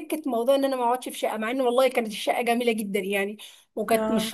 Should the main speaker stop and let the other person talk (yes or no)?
no